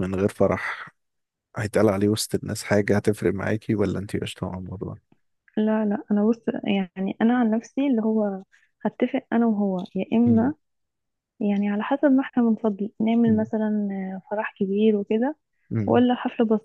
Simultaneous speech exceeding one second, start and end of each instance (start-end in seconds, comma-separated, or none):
none